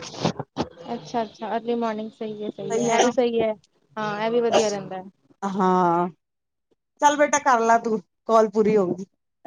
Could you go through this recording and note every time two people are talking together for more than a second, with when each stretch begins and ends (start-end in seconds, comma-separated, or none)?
none